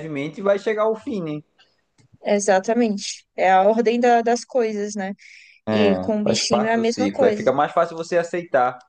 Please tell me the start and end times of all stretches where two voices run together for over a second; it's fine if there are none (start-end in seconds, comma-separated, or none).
5.7-7.5